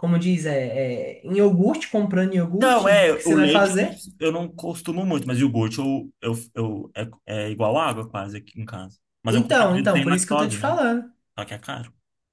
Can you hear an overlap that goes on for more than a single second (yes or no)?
yes